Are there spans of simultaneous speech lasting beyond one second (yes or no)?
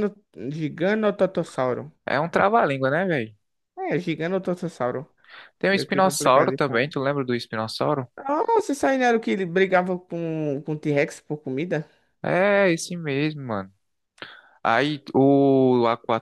yes